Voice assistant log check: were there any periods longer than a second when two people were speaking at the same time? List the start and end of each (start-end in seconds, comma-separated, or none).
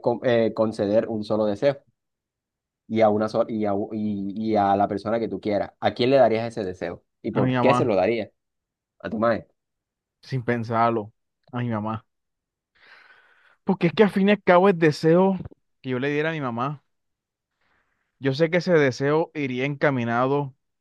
none